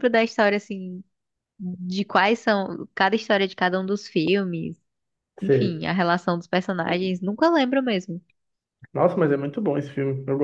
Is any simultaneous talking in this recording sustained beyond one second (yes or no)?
no